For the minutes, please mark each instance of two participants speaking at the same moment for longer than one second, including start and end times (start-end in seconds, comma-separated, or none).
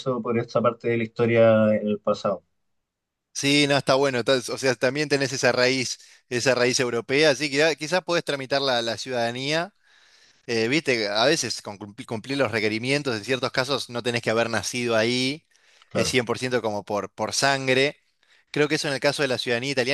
none